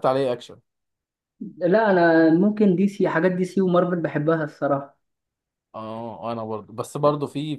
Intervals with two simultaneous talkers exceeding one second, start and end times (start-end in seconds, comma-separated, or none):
none